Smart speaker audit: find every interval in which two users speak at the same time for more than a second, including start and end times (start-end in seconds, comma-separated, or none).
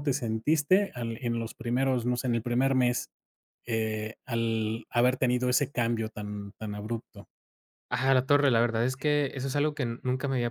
none